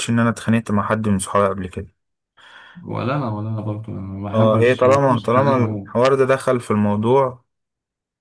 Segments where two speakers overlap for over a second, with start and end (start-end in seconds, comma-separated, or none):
4.3-6.0